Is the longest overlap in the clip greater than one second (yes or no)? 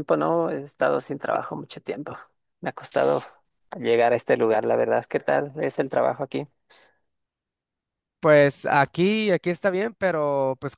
no